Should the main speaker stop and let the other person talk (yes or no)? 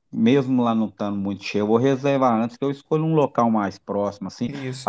no